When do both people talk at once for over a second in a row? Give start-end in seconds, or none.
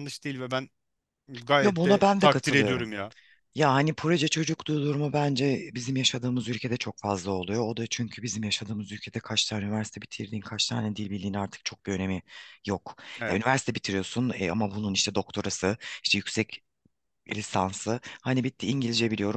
1.6-2.9